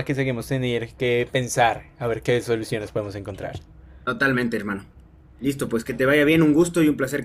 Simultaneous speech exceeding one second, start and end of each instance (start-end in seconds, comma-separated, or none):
none